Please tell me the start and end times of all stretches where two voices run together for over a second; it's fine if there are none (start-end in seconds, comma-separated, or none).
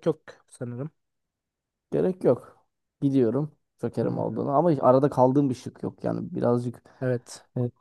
none